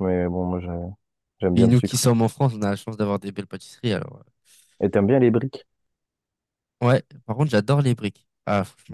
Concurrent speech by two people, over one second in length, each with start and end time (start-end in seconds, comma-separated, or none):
none